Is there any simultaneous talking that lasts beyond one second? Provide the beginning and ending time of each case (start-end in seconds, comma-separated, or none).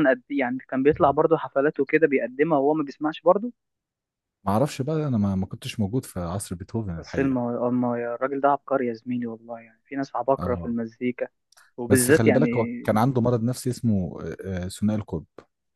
none